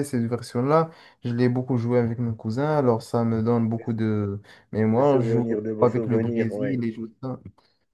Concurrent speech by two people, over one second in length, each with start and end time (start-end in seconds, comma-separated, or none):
5.0-6.8